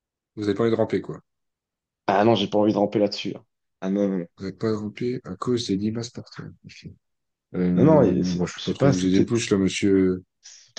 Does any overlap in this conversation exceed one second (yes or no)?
yes